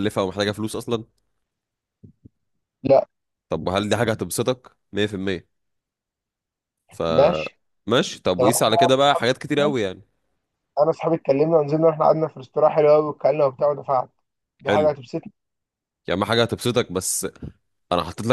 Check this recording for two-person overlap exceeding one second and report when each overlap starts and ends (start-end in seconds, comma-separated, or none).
8.4-9.7